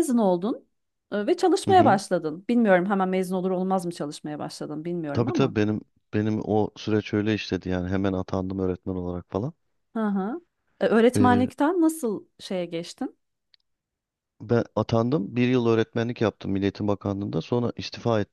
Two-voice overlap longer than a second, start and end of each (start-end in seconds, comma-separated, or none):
none